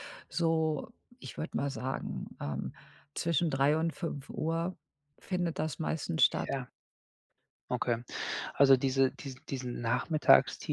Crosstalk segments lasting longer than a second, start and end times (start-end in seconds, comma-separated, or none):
none